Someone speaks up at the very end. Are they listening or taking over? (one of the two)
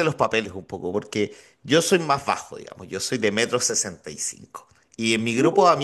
listening